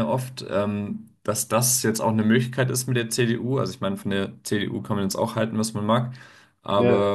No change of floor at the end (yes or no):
yes